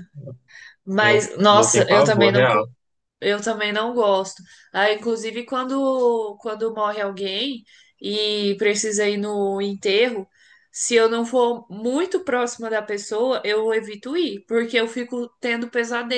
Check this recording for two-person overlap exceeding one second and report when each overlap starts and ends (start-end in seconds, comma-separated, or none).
1.0-2.6